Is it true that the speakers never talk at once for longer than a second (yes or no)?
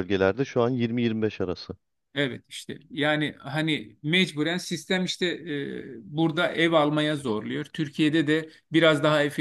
yes